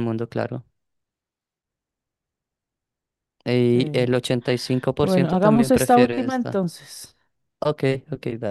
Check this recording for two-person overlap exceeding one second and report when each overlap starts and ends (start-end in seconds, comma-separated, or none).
5.0-6.6